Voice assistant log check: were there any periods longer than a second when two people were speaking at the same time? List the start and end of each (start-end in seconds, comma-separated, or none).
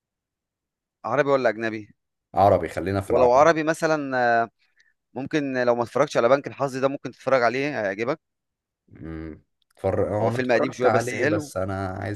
10.2-11.5